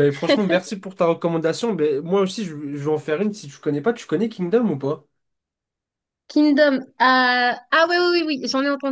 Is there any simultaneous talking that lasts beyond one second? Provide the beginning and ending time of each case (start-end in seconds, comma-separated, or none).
none